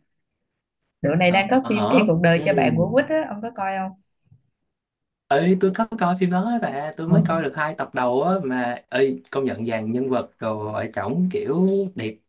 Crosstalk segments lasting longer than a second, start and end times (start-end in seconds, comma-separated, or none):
1.2-2.9